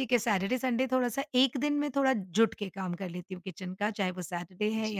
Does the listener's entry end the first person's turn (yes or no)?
yes